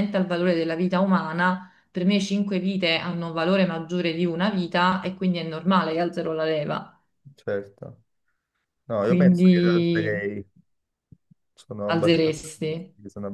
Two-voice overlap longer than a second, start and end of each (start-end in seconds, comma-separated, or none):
9.0-10.3